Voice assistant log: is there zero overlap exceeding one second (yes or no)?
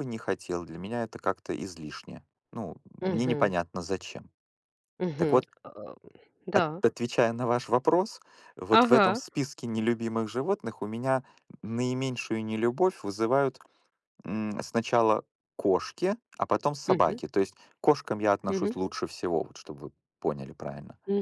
yes